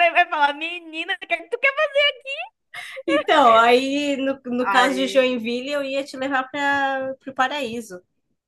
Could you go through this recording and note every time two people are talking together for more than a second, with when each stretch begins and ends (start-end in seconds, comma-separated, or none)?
none